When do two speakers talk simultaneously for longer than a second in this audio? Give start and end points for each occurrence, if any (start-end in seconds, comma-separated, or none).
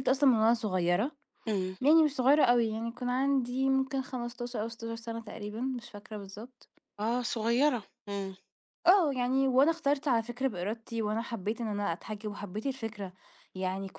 none